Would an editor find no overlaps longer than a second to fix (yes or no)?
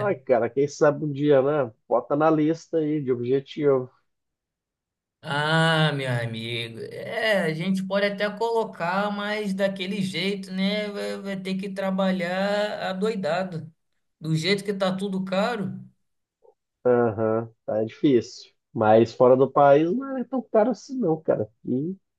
yes